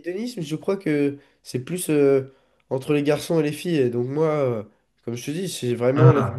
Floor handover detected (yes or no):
no